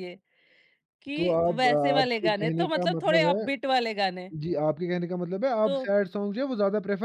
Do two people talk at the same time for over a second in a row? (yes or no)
yes